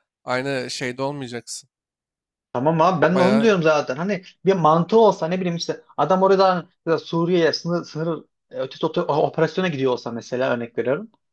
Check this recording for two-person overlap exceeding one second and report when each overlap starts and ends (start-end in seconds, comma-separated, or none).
none